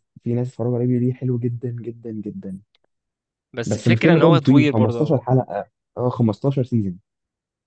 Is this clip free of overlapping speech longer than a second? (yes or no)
no